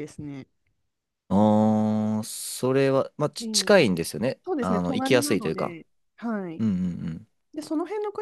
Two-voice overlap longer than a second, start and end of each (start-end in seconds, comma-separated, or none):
4.5-5.8